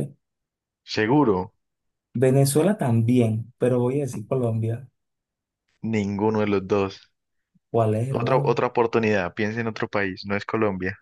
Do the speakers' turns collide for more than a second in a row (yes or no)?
no